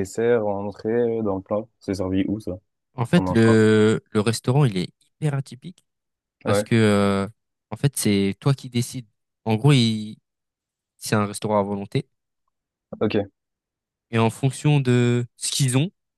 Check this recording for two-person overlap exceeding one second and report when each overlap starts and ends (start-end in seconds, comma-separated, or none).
none